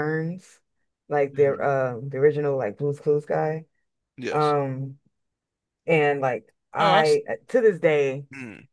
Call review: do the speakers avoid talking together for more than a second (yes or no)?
yes